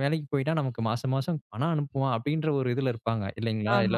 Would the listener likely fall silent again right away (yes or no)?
no